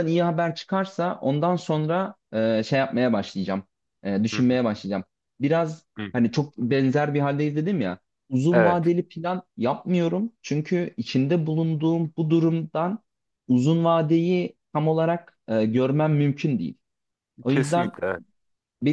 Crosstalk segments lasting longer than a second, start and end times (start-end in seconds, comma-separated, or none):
none